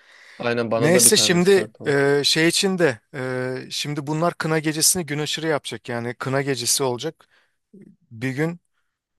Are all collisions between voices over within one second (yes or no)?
no